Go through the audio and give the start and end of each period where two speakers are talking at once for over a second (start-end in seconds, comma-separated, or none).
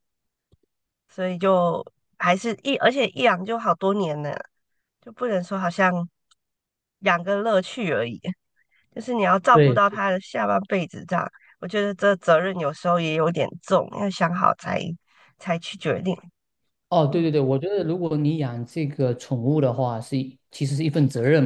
none